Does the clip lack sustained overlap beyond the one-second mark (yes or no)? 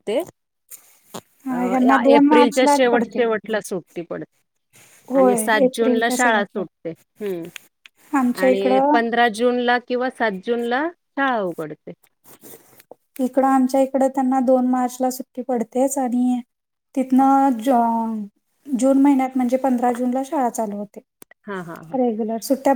no